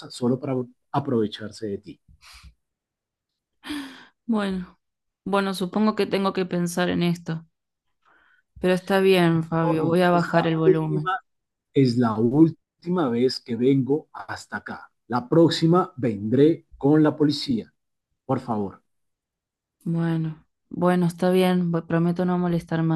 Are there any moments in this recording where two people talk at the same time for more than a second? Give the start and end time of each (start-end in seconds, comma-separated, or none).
9.6-11.1